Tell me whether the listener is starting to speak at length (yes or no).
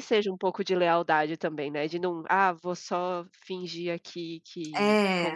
no